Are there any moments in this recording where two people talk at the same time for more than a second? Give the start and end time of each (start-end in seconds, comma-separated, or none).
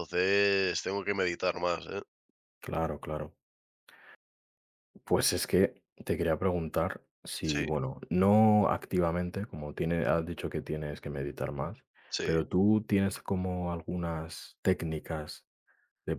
none